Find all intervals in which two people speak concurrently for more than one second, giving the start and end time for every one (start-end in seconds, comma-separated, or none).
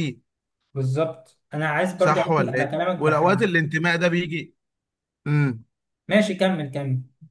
2.0-3.5